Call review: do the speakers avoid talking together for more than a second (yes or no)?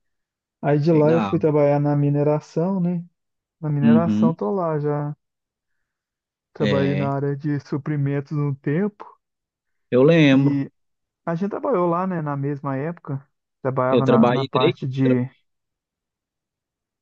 no